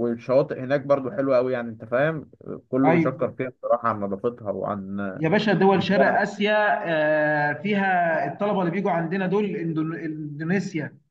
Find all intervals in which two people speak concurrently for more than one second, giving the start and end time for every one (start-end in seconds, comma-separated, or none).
none